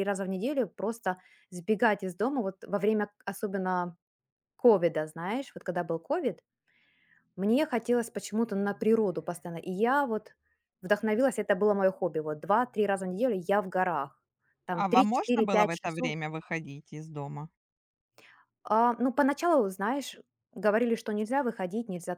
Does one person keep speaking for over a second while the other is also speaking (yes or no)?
yes